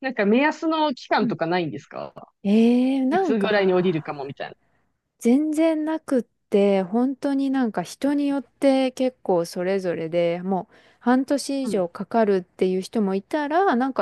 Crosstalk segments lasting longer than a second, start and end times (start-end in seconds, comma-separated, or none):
3.1-4.3